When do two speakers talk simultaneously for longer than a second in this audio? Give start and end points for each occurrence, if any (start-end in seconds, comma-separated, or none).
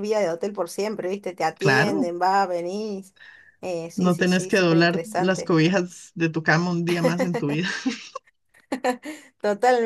3.9-5.5